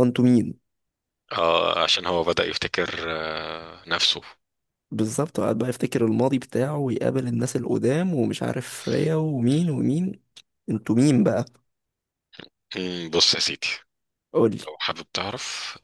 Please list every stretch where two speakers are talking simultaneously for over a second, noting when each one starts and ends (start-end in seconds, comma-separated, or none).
none